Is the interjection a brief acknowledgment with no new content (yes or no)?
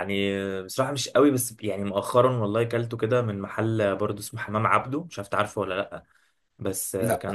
yes